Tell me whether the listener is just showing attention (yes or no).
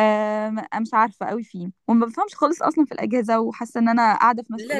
no